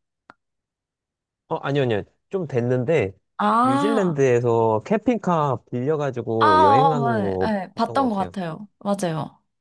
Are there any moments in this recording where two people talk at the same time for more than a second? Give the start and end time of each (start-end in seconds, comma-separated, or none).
6.4-8.3